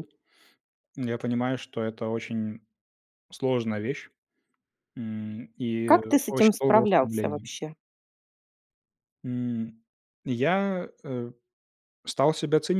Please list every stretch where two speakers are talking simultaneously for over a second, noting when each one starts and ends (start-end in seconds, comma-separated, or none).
5.9-7.5